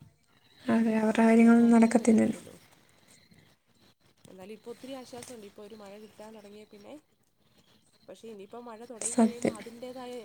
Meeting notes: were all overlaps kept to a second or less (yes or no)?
no